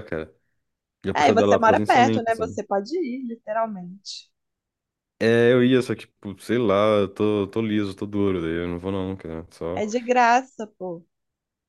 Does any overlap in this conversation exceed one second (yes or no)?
yes